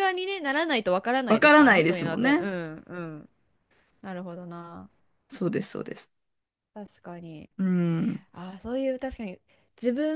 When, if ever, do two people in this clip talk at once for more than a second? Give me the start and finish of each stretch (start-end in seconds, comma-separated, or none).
1.3-2.5